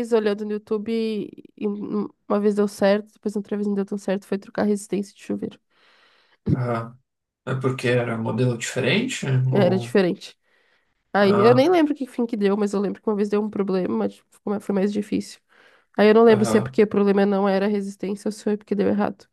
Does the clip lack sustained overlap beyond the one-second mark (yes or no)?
yes